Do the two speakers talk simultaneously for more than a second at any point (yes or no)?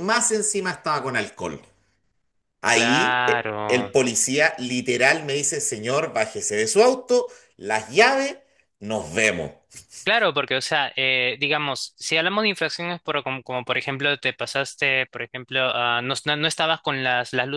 yes